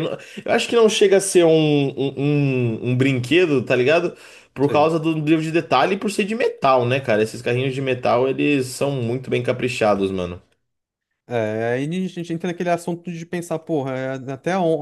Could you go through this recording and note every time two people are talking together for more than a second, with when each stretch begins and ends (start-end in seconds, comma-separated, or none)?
none